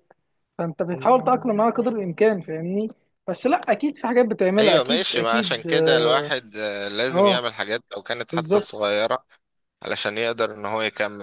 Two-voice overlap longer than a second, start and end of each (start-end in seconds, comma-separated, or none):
4.6-6.3